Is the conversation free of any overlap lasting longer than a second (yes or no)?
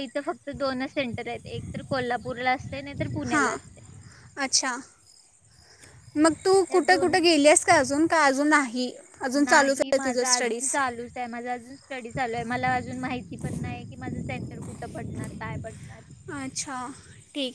no